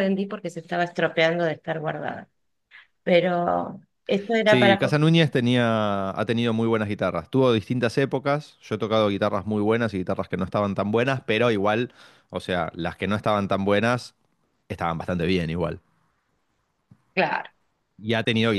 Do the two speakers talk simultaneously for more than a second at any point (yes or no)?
no